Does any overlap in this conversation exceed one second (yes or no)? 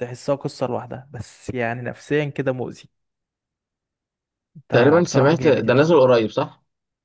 yes